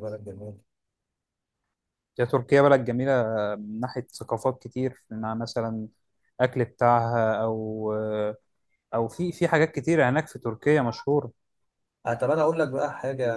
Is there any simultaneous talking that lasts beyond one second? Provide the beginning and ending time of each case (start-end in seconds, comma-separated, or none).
none